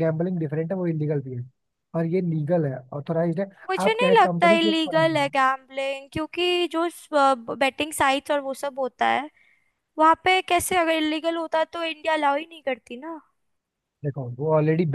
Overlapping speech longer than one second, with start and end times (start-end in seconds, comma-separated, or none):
3.9-5.3